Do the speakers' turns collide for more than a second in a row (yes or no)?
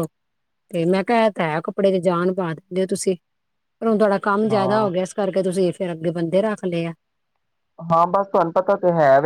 no